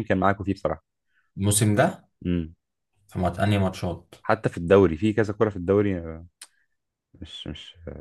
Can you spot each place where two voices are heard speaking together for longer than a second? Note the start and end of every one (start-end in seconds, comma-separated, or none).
none